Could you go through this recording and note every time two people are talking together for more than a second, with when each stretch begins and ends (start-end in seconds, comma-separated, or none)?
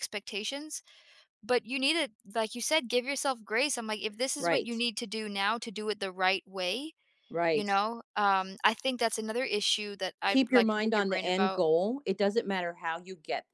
10.3-11.6